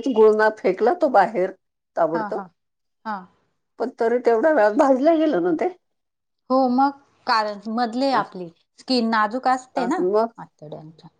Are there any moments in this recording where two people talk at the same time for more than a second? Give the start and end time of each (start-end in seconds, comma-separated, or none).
none